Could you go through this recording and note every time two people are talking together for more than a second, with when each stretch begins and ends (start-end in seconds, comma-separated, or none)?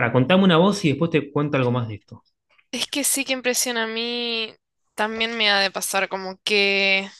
none